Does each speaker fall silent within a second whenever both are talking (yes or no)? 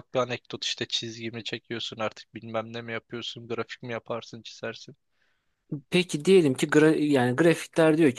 yes